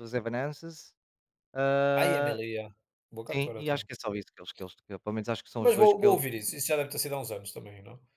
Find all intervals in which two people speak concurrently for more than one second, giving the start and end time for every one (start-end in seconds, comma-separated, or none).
none